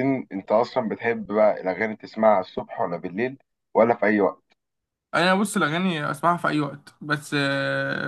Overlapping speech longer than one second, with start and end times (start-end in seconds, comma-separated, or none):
none